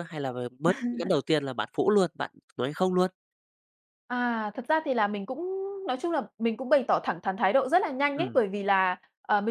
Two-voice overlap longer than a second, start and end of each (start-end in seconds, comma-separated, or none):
none